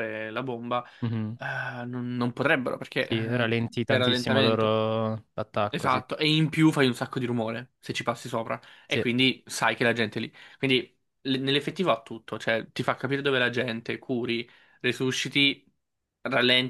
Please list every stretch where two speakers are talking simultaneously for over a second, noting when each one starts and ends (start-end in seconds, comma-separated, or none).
3.0-4.8